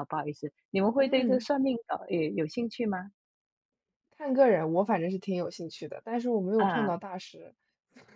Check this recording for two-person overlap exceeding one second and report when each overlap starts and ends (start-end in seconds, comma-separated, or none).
none